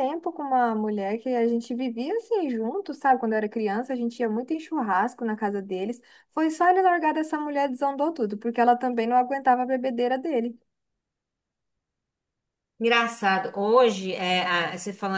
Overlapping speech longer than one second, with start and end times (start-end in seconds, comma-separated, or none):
none